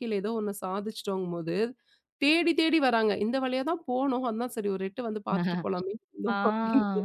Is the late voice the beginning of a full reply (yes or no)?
yes